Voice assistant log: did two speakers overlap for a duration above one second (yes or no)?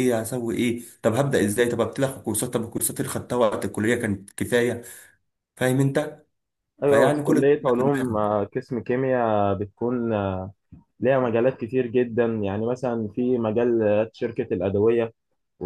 yes